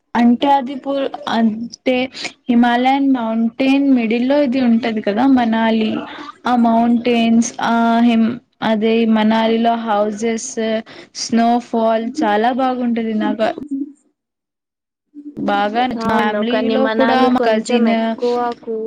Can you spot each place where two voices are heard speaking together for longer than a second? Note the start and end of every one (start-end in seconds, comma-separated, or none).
16.1-17.9